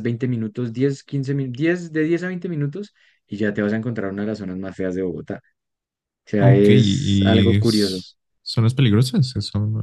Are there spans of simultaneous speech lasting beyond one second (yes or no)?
yes